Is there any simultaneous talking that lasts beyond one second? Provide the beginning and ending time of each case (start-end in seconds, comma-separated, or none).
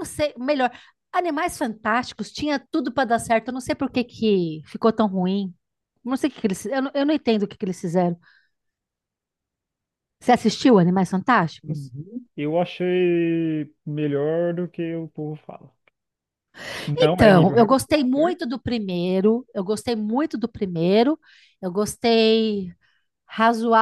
17.0-18.4